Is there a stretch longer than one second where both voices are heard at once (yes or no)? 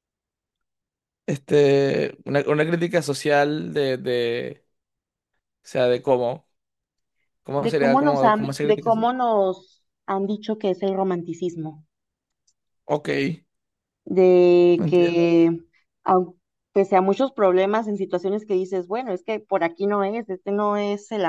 yes